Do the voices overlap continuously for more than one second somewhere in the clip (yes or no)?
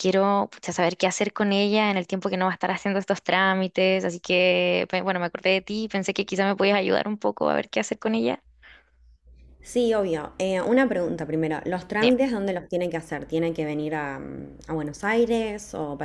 no